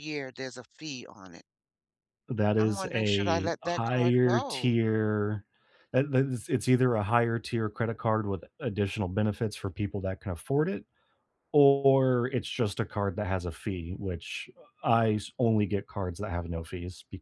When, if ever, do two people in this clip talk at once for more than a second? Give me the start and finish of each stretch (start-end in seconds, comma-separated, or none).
2.6-4.7